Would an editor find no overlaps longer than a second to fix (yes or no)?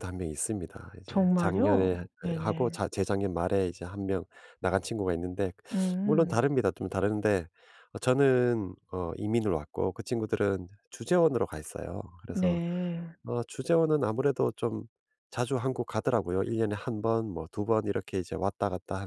no